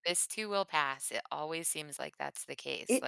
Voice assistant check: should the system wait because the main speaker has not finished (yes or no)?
no